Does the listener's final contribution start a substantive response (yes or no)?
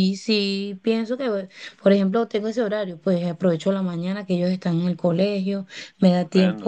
no